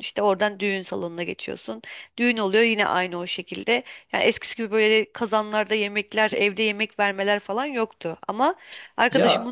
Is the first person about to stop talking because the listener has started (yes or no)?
no